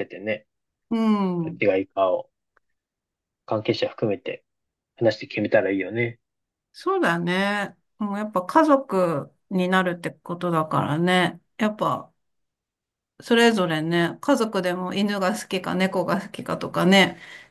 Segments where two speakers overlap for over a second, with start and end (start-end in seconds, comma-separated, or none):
none